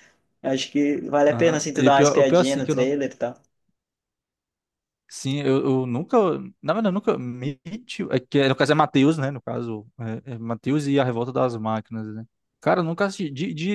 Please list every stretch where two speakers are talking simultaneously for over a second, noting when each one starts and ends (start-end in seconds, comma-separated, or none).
1.3-3.0